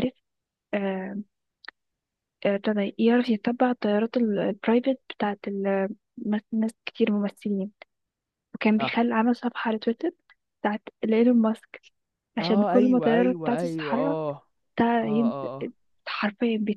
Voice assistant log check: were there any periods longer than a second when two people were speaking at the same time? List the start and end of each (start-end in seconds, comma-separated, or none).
12.4-14.2